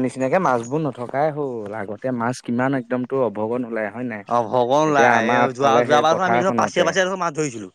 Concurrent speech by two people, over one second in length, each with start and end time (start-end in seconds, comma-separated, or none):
4.9-6.8